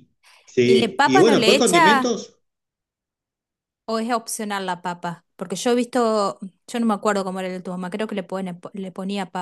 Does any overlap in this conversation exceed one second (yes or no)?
yes